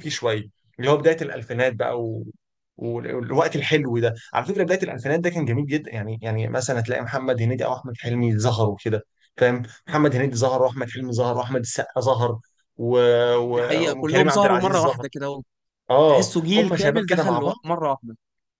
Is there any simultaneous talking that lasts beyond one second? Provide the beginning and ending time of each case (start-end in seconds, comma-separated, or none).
13.6-15.1, 16.1-17.5